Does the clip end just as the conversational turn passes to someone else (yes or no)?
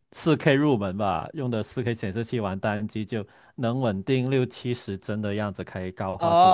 yes